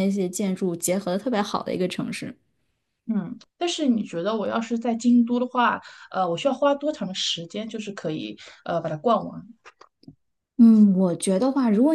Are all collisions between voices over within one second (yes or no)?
yes